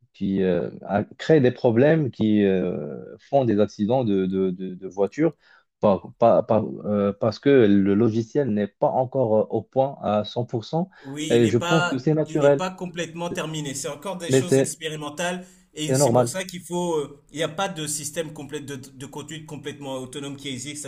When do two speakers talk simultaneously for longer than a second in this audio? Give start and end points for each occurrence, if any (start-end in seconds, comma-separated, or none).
11.3-12.7